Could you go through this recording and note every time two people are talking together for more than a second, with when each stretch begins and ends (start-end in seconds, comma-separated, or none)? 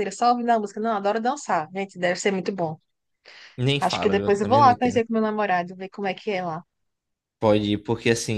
3.8-5.0